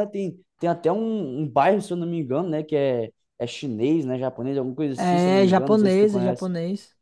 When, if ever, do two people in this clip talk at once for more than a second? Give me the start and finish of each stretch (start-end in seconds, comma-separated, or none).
4.9-6.5